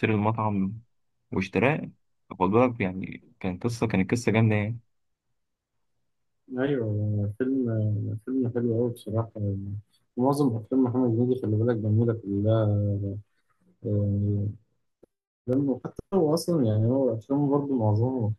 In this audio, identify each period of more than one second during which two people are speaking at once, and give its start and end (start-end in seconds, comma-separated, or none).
none